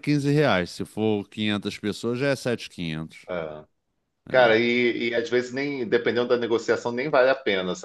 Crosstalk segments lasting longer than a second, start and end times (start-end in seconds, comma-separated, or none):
none